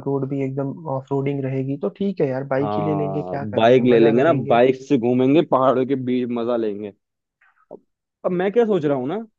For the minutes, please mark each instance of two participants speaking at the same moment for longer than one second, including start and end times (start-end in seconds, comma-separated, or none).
2.6-4.6